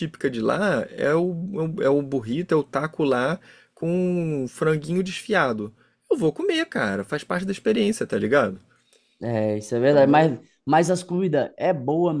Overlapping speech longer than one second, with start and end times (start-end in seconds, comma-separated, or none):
none